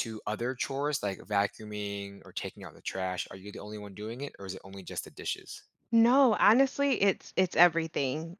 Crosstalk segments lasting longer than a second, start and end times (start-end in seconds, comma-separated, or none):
none